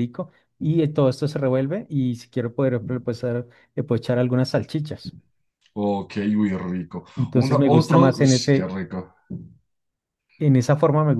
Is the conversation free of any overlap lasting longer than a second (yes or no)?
no